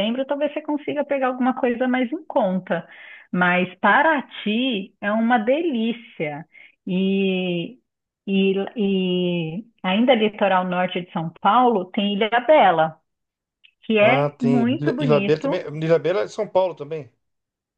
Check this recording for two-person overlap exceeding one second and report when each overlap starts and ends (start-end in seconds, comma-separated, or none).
14.0-15.6